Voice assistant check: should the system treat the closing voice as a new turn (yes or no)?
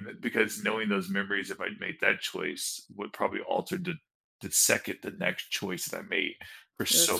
no